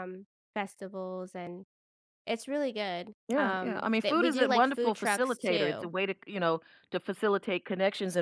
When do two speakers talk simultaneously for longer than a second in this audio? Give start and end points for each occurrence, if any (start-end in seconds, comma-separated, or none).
3.3-5.9